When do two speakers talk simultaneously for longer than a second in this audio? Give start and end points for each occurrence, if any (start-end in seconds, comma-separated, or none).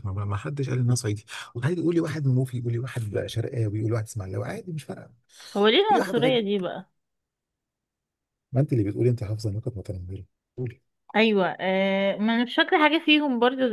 none